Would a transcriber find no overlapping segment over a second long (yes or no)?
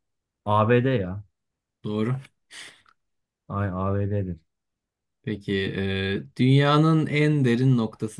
yes